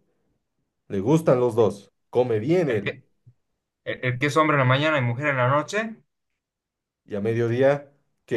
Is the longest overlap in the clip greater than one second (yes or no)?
no